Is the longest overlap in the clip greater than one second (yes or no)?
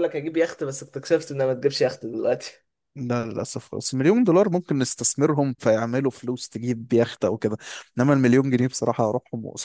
no